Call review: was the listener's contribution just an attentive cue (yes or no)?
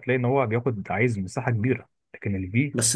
no